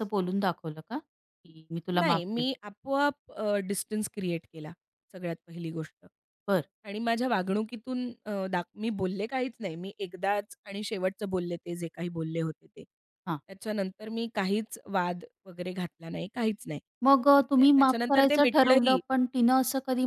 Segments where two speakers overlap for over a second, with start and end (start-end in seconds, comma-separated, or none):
17.4-19.0